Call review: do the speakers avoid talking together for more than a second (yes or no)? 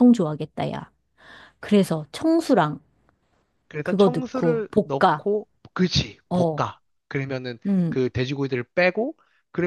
no